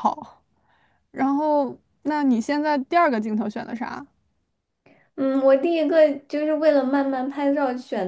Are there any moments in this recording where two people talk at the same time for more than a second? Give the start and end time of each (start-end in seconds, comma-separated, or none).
none